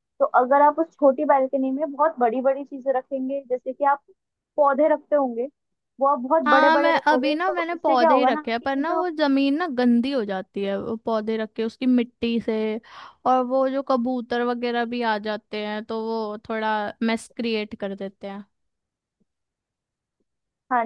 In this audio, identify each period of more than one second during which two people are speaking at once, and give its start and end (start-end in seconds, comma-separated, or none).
6.5-9.0